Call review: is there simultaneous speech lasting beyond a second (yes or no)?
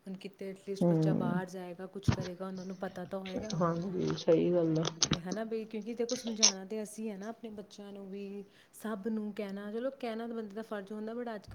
no